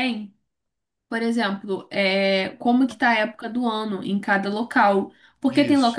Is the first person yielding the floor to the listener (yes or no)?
no